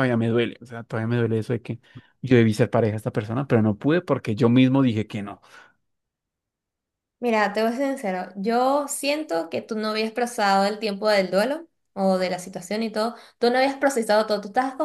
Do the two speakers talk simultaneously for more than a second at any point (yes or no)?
no